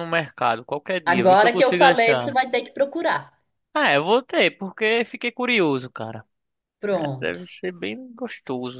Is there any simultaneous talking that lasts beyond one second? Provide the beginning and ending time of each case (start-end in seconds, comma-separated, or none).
1.0-2.3